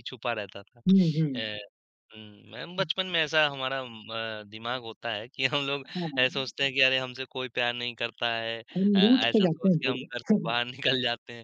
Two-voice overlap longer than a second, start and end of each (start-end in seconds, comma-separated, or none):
8.8-10.6